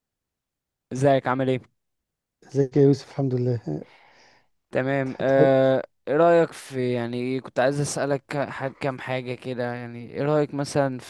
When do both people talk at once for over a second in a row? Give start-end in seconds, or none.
none